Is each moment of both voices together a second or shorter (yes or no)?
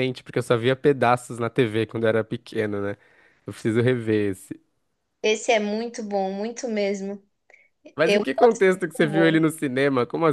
no